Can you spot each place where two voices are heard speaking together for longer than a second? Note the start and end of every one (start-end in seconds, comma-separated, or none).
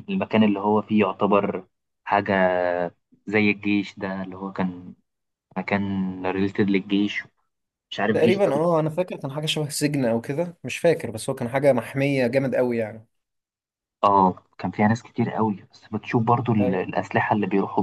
none